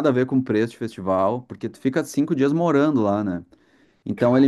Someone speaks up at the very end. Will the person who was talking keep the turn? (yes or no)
yes